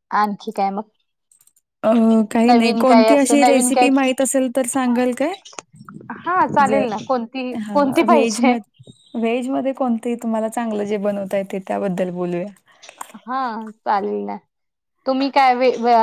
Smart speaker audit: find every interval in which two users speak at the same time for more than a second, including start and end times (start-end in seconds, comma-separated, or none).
2.5-3.9